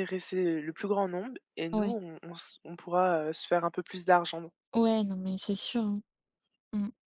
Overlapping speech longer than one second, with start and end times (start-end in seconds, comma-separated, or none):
none